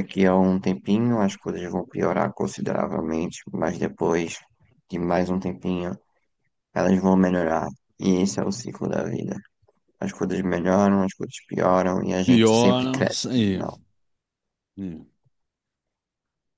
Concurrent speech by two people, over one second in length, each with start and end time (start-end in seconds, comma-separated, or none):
12.2-13.6